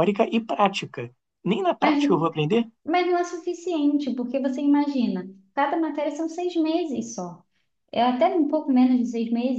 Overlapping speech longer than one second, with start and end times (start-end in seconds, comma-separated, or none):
none